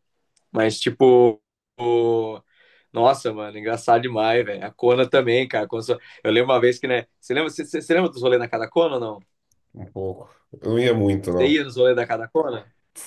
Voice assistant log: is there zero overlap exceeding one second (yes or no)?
yes